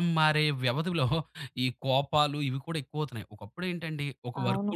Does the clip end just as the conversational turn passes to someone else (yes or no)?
no